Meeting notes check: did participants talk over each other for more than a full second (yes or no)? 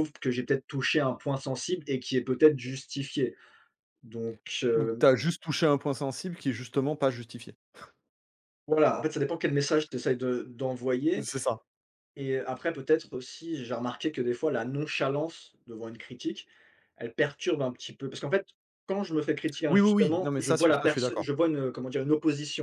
yes